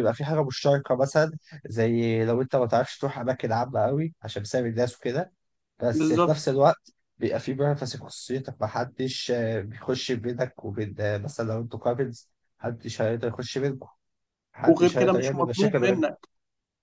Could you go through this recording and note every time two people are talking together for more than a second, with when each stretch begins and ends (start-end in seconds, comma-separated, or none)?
14.7-16.1